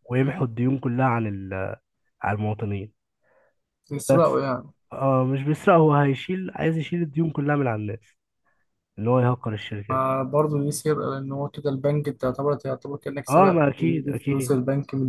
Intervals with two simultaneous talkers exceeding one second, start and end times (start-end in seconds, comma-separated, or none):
13.3-14.6